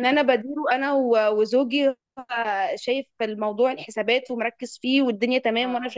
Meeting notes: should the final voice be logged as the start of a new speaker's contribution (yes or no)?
no